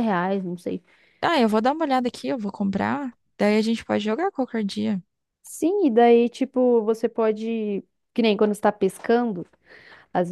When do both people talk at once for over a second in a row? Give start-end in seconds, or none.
none